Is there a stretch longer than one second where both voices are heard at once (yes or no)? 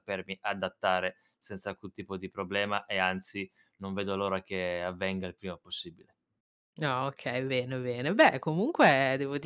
no